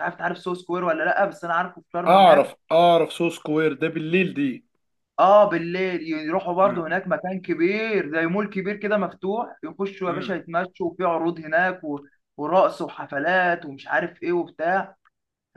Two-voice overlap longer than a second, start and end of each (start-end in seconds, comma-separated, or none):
none